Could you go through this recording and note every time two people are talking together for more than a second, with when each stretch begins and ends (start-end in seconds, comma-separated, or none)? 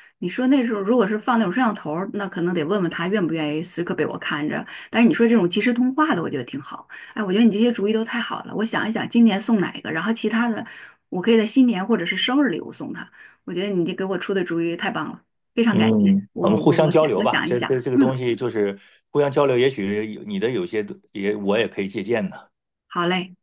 15.7-18.1